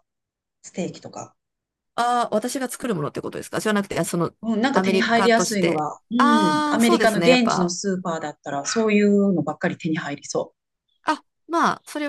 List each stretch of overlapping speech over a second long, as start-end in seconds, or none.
4.7-7.7